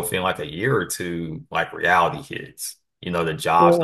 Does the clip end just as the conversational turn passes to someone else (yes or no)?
no